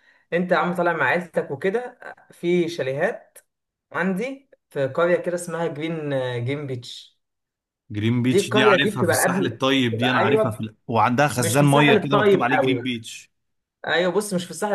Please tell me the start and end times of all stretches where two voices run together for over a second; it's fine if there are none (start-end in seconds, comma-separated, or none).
8.2-10.7, 11.4-12.8